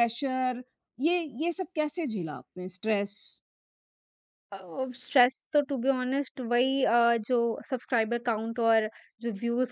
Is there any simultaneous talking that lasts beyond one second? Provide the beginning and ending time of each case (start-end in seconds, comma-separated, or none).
none